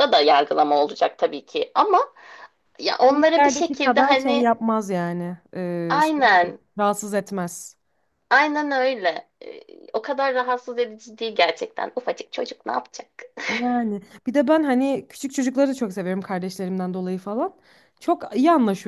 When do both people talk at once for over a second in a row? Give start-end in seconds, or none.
3.1-4.5